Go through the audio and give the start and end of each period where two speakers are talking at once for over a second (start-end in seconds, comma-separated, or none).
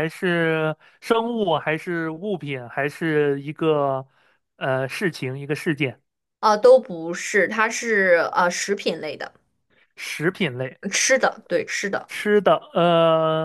none